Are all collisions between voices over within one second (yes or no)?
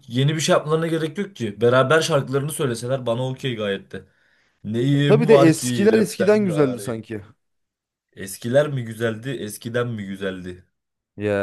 no